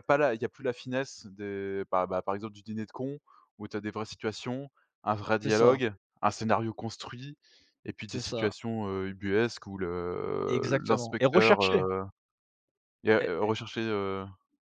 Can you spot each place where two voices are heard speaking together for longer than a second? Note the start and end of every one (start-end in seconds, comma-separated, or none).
10.5-11.8